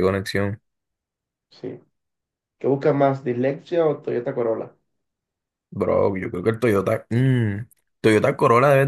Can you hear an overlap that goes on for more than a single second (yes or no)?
no